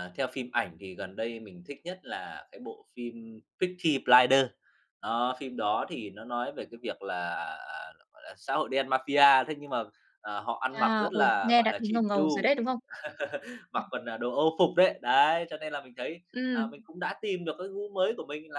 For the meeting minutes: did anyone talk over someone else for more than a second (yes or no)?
yes